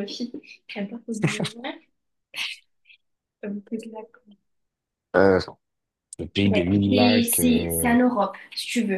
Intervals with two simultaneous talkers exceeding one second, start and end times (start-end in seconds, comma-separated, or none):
6.5-7.9